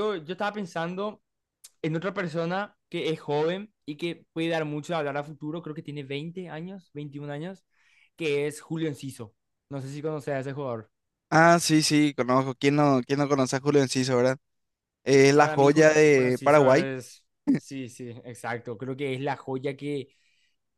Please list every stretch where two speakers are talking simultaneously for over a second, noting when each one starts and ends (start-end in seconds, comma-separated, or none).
15.4-16.9